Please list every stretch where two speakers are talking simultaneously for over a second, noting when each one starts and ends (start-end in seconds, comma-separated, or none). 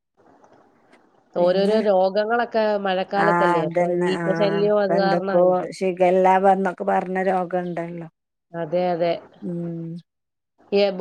3.3-5.4